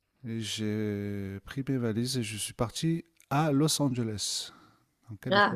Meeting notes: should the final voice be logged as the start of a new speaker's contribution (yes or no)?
yes